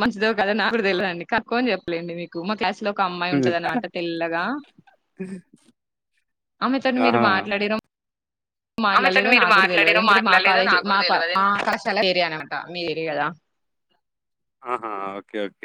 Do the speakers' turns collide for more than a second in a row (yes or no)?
yes